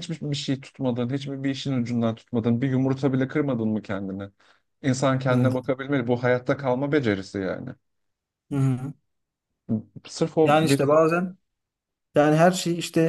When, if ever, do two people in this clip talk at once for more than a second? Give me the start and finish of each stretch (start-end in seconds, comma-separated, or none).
none